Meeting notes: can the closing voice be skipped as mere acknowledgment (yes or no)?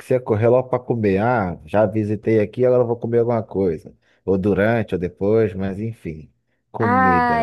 no